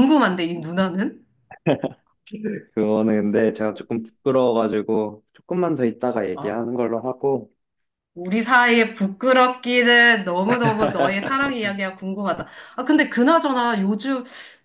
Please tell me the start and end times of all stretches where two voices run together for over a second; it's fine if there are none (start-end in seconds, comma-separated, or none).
none